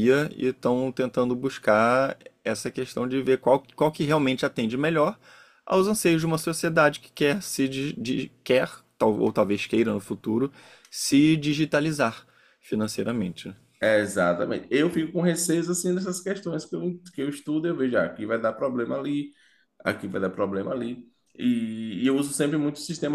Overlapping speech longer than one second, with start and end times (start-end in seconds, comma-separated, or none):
none